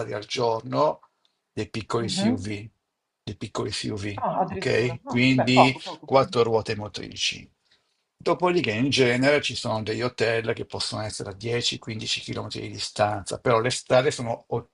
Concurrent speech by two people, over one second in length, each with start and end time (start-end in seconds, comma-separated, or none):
4.2-6.1